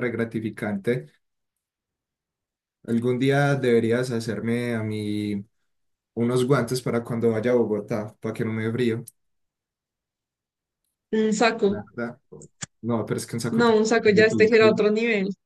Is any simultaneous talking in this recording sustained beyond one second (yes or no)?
yes